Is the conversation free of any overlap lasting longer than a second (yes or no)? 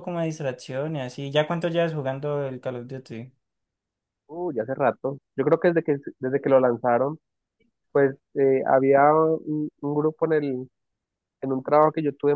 yes